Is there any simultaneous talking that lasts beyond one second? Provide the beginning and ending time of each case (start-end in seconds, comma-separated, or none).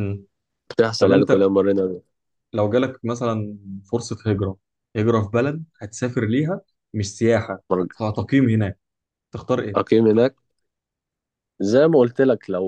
none